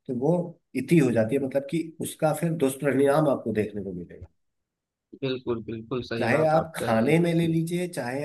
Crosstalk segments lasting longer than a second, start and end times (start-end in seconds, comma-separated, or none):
6.2-7.5